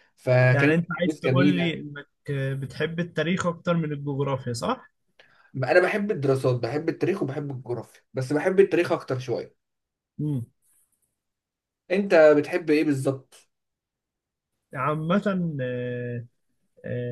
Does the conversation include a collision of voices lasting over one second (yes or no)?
yes